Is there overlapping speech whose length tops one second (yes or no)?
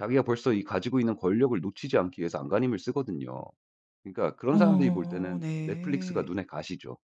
yes